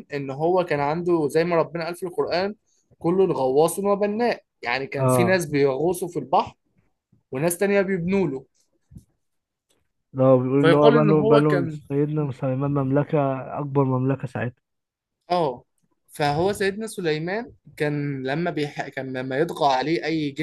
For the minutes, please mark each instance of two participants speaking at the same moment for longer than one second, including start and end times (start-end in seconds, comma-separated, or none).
10.6-11.8